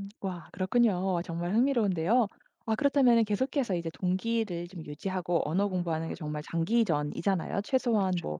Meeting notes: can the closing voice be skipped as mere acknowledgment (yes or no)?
yes